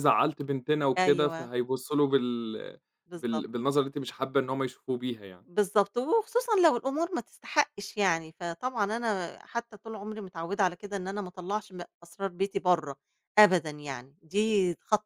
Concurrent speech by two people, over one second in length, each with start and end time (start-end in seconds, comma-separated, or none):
none